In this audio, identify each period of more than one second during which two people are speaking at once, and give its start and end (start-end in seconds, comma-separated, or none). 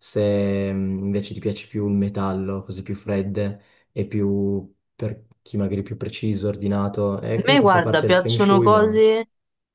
7.3-9.0